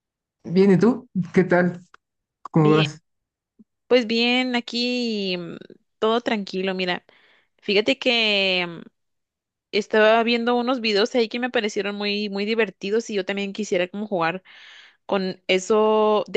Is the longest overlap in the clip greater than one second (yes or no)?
no